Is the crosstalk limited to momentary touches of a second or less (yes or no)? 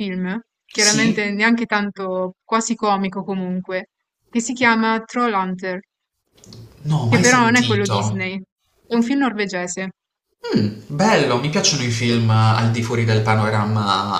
no